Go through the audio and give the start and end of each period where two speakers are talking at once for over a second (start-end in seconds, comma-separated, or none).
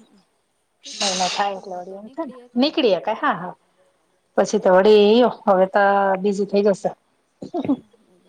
0.8-3.5